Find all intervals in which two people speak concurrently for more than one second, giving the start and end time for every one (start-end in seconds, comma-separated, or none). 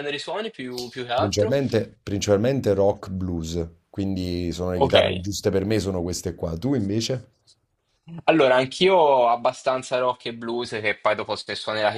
none